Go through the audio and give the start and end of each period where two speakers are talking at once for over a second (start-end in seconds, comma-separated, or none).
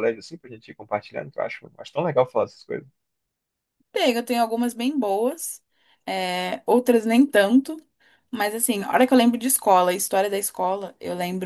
none